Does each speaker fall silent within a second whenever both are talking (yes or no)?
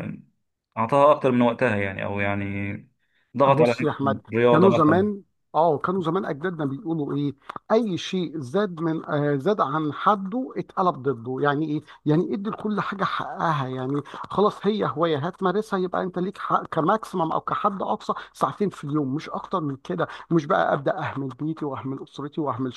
no